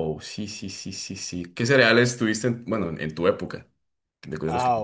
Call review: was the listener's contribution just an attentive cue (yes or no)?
no